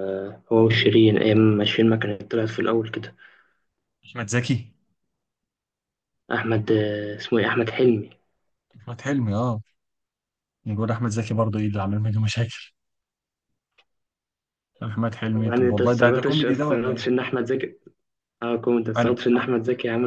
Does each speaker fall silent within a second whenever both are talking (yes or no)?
no